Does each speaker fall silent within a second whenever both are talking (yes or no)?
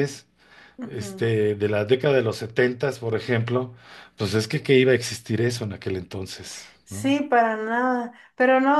yes